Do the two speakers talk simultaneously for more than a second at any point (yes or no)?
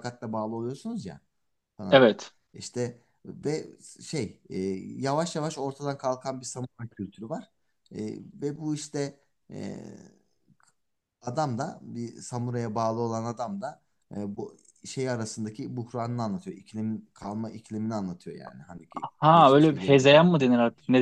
yes